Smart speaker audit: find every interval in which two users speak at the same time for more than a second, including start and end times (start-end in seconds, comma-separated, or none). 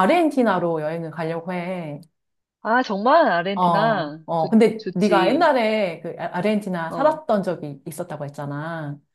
3.5-5.5